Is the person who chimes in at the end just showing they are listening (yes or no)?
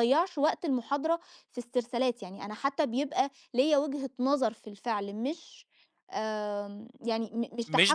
no